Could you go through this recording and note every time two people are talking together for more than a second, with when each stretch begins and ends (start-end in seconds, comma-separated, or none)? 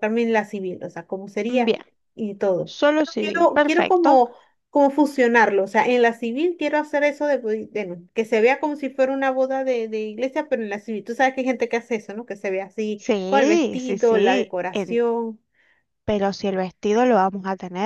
2.6-4.2, 13.0-15.0